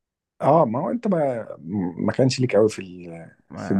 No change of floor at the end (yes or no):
no